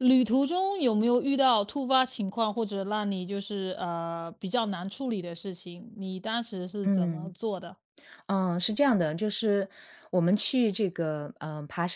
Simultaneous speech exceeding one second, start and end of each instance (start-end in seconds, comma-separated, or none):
none